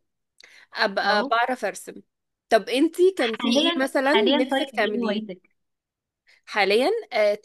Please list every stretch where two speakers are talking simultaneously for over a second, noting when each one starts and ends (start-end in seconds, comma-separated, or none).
3.2-5.3